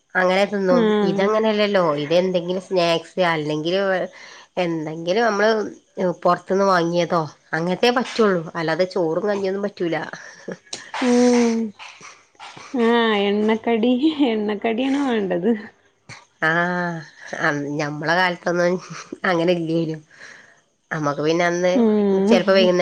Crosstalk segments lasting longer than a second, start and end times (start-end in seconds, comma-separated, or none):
none